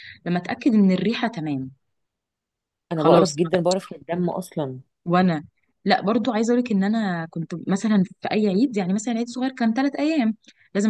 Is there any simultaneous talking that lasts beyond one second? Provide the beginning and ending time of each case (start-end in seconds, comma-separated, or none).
none